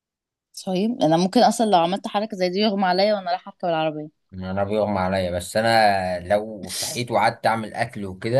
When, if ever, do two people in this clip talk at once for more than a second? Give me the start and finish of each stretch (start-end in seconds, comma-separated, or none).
none